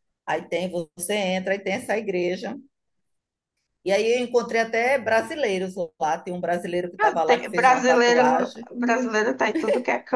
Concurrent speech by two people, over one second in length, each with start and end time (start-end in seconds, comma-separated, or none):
7.0-8.7